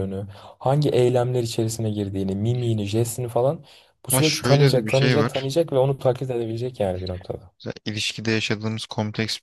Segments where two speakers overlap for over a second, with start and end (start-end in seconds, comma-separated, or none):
4.1-5.5